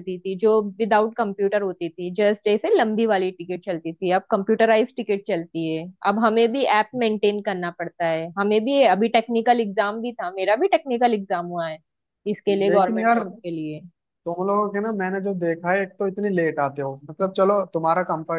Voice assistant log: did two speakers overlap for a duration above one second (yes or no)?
no